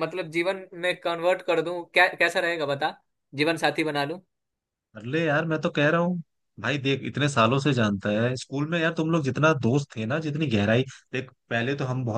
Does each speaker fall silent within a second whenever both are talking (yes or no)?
yes